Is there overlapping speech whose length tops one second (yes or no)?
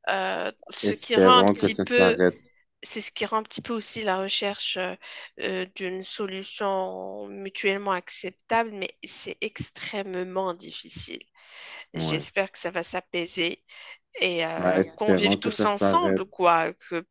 yes